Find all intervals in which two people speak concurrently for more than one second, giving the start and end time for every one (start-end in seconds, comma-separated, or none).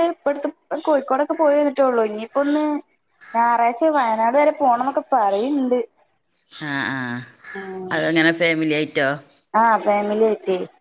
none